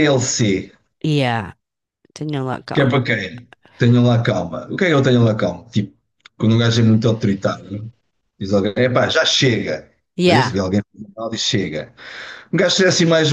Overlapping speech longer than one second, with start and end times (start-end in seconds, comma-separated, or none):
none